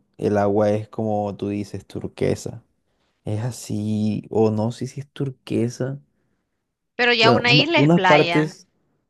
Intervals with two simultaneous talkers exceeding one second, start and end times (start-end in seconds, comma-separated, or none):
7.2-8.6